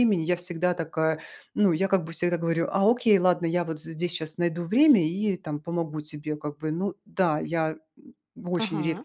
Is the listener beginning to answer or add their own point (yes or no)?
yes